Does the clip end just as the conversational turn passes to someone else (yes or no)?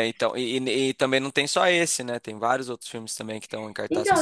yes